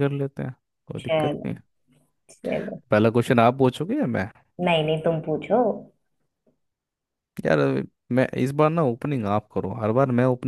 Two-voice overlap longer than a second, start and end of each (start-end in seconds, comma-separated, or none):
none